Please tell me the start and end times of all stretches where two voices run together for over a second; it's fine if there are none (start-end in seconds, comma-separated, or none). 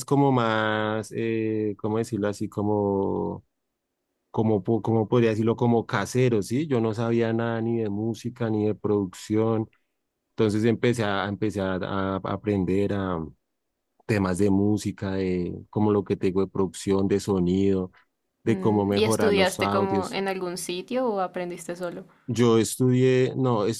18.4-20.2